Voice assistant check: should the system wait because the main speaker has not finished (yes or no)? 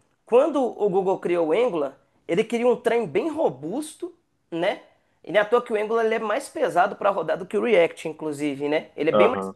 yes